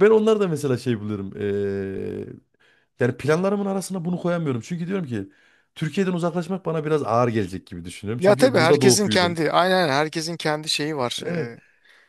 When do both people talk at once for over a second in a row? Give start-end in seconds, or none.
8.2-9.4